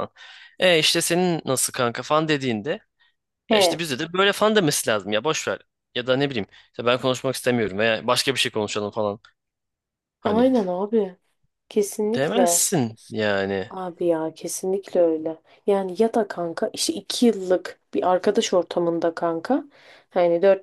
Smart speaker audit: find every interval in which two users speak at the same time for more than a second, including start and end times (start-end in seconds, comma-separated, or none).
none